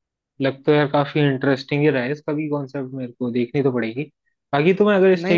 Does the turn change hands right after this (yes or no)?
no